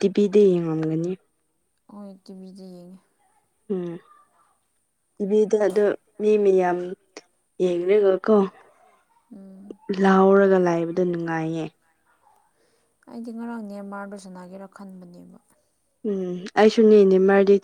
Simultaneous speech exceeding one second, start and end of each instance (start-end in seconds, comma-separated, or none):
none